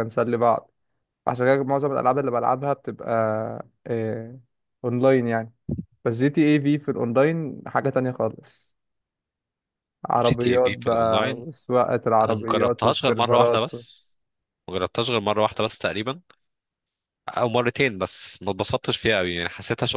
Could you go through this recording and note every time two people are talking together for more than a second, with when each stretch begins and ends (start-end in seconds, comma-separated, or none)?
10.2-11.5, 12.2-13.7